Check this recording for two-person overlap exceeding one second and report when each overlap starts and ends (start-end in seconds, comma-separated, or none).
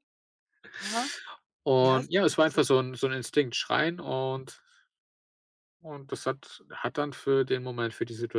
1.8-3.0